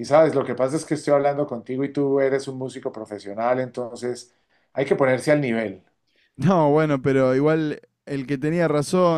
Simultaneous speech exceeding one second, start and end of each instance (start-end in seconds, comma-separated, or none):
none